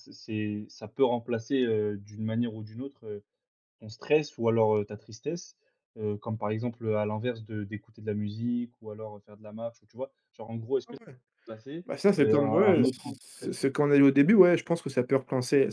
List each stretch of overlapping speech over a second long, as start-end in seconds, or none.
11.8-13.7